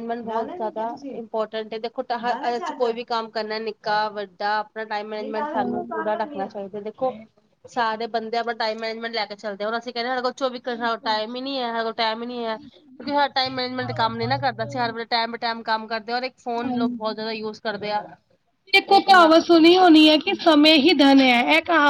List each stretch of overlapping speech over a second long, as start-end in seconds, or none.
12.6-15.0